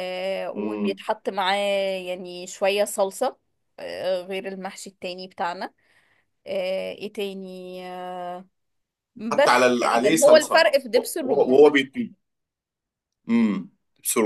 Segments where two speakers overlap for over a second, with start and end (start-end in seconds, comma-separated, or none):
9.3-11.7